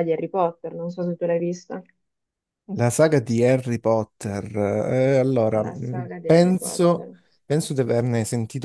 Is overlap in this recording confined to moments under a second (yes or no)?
no